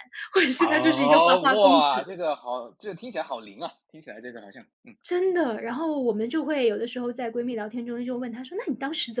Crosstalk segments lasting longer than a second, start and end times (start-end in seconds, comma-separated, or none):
0.6-1.9